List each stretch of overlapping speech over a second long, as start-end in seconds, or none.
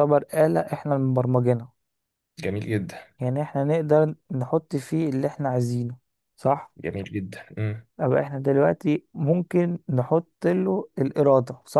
none